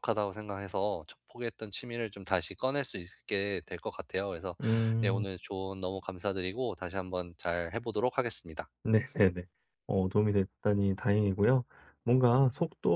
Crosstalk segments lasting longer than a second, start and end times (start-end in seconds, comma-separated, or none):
none